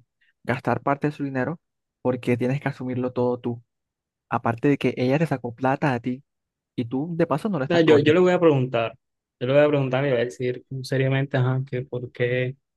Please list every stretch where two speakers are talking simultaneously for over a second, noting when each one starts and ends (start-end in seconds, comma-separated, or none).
none